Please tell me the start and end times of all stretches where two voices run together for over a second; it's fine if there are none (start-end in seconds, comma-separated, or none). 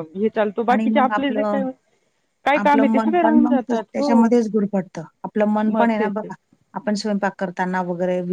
2.6-4.1